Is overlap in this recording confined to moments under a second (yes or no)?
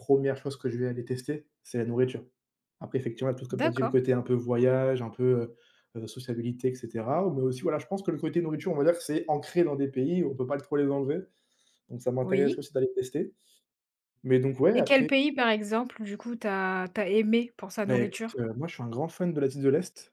yes